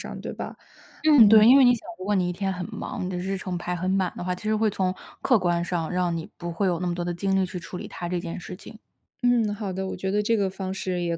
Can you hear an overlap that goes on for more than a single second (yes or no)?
no